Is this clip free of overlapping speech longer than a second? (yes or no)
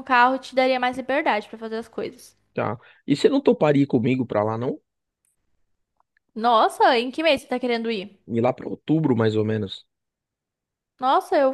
yes